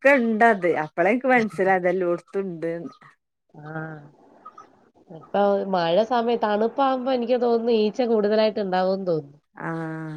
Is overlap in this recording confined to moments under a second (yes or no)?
yes